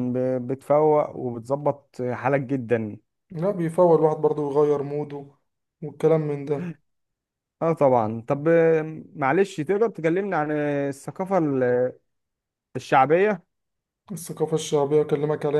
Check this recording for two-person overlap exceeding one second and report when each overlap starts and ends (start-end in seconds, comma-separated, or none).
none